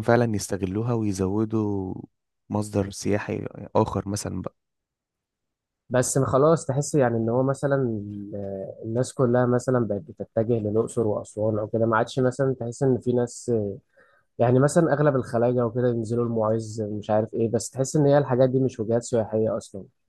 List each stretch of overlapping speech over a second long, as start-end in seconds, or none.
none